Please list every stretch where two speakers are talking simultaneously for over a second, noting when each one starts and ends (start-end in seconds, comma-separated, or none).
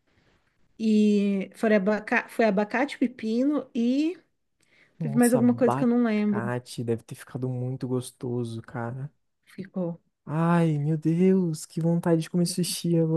5.0-6.4